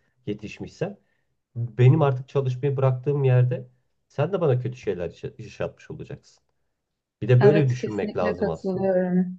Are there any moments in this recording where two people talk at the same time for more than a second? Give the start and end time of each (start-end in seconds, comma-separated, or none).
7.4-8.9